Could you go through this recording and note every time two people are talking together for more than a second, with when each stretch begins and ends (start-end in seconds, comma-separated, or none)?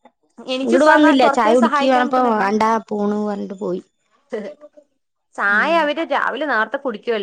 0.7-2.5